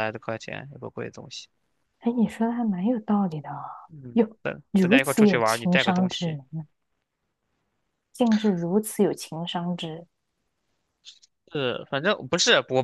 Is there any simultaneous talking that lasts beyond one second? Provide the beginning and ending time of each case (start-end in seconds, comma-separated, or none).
4.8-6.4